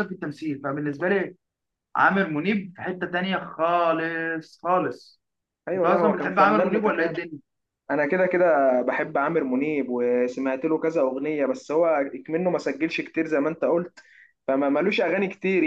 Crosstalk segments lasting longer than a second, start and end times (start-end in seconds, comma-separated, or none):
5.7-7.2